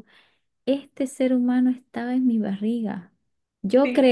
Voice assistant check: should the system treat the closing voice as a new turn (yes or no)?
no